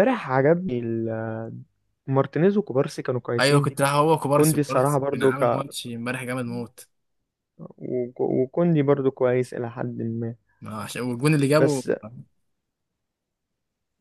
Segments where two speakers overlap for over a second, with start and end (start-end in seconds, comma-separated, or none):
4.3-5.6